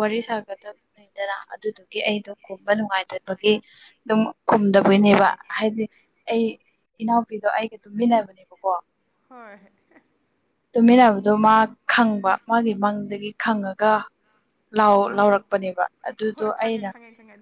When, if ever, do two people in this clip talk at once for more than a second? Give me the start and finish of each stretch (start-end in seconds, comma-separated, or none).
none